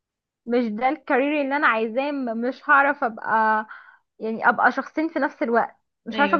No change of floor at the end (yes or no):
yes